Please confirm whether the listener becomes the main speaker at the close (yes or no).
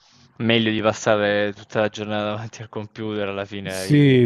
yes